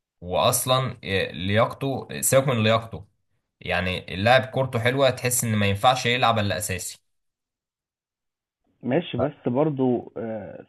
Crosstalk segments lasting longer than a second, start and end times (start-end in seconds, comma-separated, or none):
none